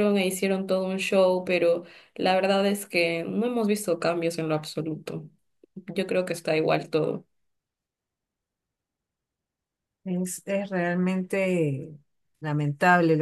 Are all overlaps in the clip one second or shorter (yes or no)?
yes